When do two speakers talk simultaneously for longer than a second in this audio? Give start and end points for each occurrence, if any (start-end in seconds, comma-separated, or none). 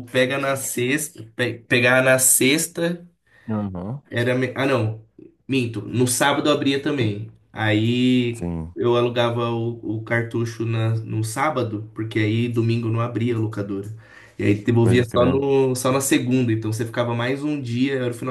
none